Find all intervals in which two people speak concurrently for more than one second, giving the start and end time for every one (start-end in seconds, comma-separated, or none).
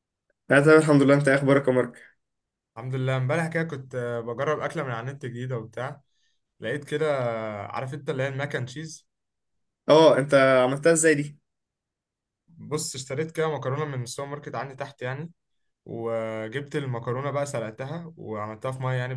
none